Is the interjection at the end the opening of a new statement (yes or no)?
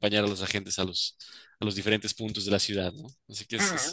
yes